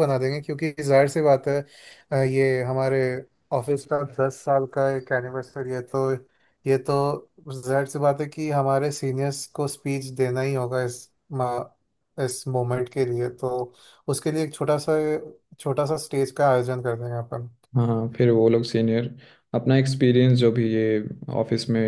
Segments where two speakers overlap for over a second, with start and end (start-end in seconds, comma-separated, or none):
none